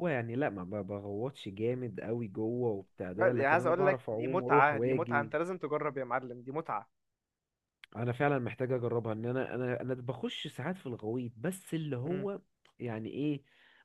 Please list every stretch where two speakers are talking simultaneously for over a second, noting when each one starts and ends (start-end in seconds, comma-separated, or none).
3.1-5.3